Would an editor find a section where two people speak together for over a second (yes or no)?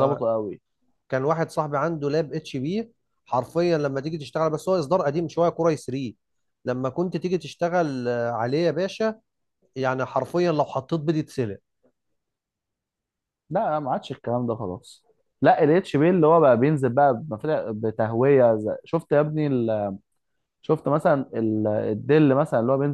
no